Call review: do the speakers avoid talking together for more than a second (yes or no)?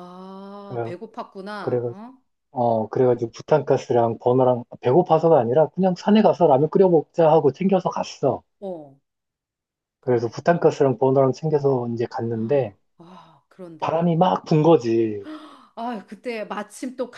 yes